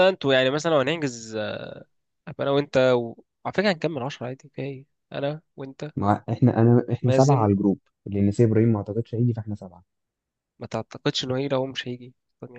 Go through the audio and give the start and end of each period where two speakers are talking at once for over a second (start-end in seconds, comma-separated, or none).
none